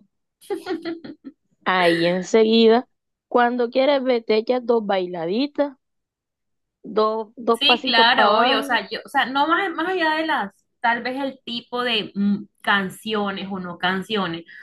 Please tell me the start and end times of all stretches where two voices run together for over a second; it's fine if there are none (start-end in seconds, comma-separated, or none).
7.5-8.8